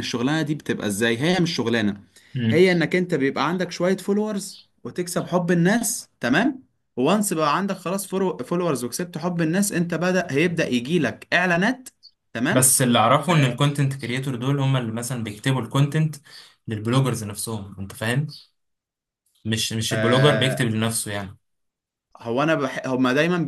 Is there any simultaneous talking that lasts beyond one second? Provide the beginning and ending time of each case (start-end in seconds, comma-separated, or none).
none